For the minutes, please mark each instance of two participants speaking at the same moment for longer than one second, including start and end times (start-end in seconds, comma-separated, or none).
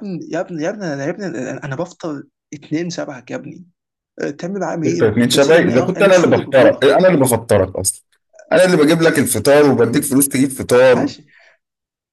4.8-6.9